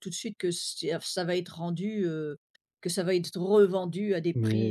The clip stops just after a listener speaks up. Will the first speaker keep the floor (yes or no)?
no